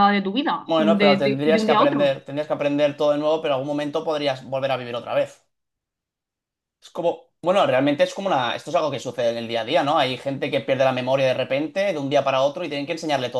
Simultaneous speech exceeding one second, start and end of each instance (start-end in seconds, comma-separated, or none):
0.7-2.2